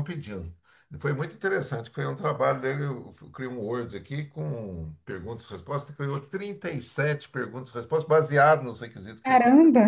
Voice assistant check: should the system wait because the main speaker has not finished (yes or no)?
yes